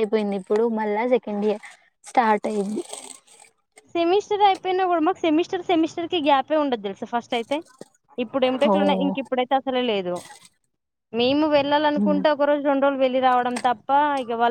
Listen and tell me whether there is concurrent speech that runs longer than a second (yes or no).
no